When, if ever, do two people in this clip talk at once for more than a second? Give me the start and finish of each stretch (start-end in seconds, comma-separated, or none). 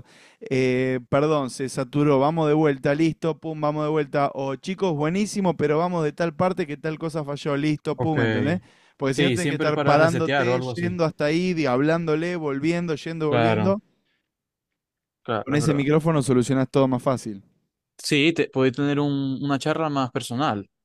9.1-11.0